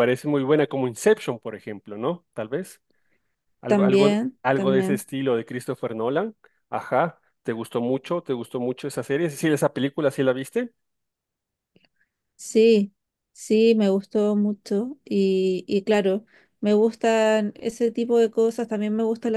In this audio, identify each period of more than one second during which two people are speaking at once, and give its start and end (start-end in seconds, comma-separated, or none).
3.7-5.0